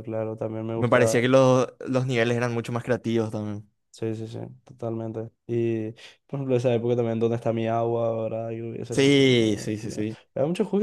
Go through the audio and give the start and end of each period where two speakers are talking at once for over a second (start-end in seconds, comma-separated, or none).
8.9-10.2